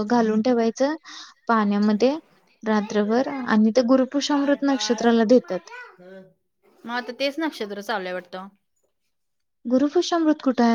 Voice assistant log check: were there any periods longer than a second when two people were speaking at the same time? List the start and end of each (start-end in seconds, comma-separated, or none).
none